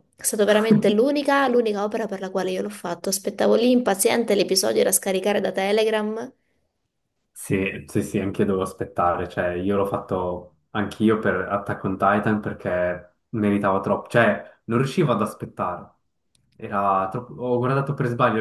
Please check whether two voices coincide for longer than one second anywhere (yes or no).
no